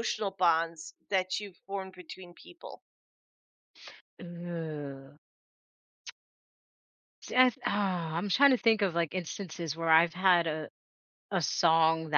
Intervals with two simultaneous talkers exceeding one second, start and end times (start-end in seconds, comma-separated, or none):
none